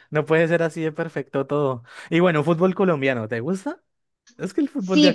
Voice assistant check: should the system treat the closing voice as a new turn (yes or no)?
yes